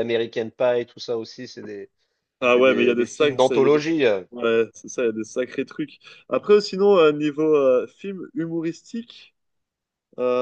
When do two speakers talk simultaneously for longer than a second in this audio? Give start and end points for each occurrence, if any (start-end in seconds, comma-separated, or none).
2.5-3.8